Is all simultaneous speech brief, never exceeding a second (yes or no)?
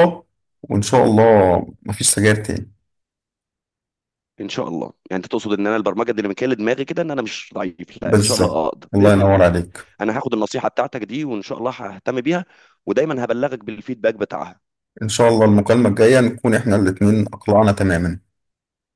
no